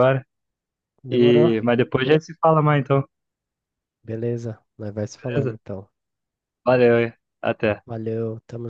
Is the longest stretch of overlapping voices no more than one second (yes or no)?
yes